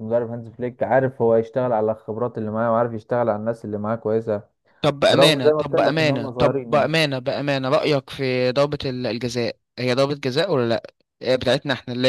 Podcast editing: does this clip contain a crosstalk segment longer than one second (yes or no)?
yes